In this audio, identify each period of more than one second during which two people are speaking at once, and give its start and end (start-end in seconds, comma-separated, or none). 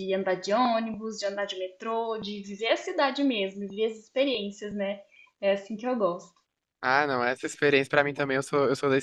none